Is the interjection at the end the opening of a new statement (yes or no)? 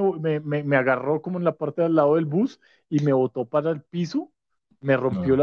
no